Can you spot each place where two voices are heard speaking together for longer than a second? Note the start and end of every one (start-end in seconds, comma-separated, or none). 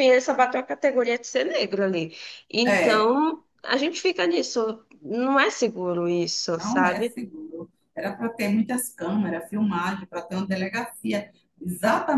none